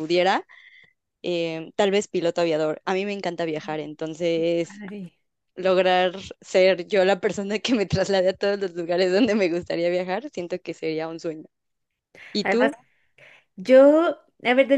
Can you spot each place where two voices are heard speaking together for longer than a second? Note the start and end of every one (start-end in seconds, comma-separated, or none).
none